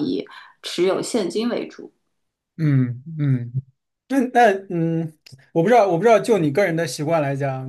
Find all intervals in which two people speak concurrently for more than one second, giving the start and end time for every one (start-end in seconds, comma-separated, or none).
none